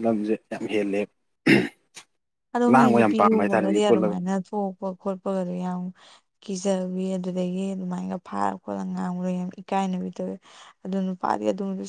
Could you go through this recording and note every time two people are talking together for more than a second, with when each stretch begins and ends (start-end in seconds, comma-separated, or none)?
2.7-4.2